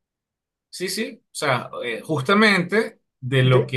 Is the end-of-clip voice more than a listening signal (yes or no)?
no